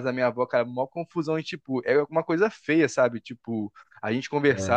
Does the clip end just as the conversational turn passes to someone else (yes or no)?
no